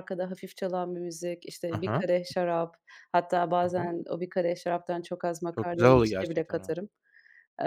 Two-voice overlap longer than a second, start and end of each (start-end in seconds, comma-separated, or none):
5.5-6.7